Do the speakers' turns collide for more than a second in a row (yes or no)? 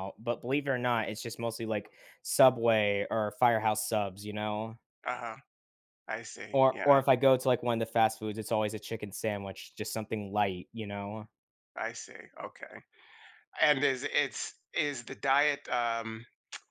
no